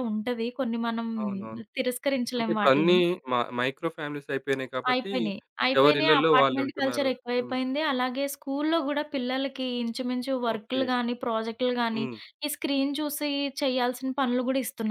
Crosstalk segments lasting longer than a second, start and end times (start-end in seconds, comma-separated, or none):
5.8-7.5